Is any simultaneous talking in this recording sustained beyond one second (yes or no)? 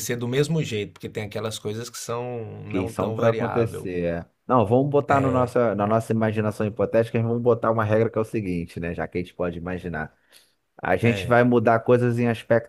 yes